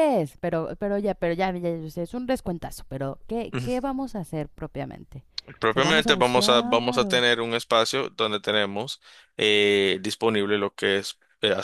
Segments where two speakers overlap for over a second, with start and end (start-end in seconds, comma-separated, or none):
5.7-7.2